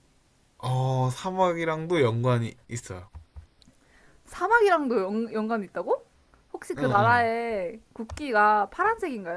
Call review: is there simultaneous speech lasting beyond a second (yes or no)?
no